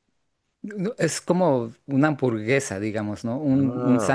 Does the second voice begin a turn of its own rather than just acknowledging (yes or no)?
no